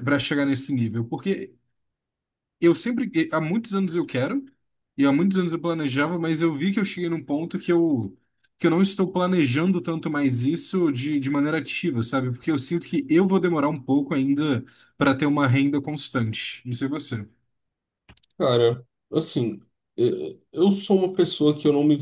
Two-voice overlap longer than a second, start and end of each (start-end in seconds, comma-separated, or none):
none